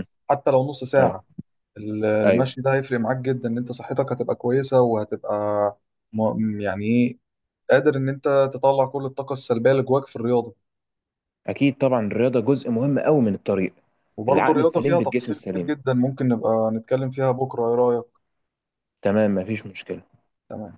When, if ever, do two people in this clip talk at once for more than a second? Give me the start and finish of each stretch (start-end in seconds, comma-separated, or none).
14.3-15.7